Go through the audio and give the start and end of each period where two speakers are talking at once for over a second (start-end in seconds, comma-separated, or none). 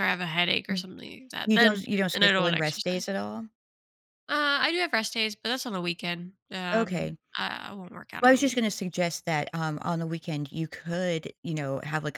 1.4-3.1